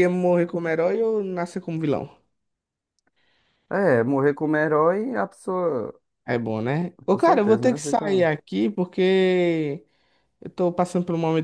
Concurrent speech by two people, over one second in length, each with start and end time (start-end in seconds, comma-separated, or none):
7.0-8.3